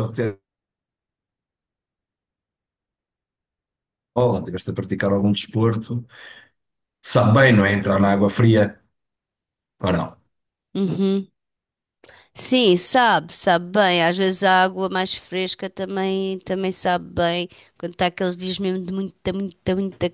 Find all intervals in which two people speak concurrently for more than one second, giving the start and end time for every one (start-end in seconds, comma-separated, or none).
none